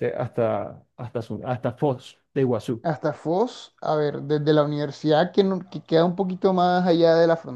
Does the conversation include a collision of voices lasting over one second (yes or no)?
no